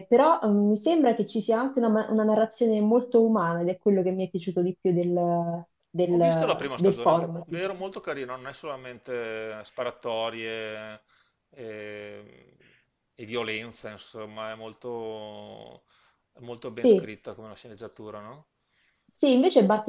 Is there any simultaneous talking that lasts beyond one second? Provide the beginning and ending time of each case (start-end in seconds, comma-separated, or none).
6.1-7.8